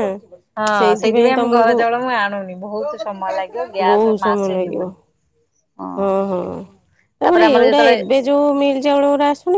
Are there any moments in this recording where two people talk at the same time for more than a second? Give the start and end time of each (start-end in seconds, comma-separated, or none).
2.9-4.2